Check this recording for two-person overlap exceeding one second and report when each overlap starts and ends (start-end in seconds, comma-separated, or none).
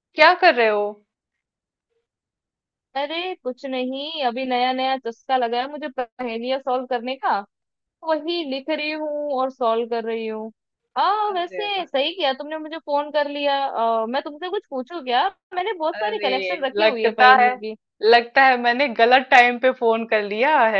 15.9-17.6